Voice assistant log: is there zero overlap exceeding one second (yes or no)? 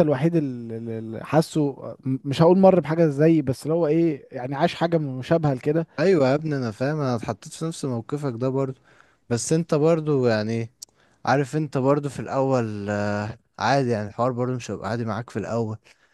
yes